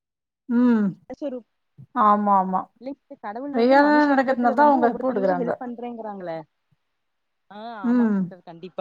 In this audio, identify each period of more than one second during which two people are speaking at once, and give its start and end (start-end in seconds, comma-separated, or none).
3.6-5.5